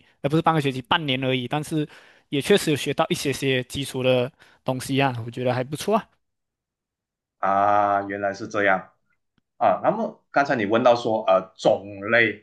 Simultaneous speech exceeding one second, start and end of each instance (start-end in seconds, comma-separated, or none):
none